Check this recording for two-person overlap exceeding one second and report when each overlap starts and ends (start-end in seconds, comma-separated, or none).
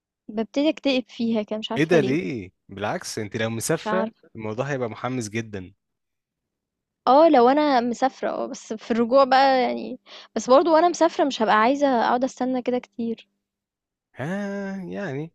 none